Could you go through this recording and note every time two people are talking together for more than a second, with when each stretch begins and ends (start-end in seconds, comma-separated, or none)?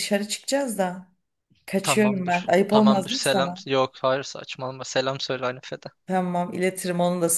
1.8-3.6